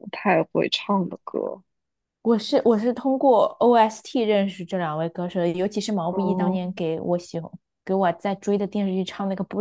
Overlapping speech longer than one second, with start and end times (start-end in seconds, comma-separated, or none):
none